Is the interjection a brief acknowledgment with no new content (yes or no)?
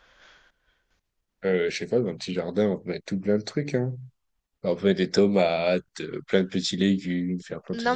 no